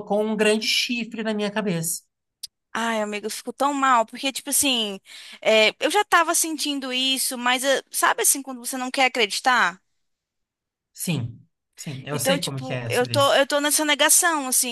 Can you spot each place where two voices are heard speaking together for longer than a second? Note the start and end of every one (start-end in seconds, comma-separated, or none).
12.1-13.4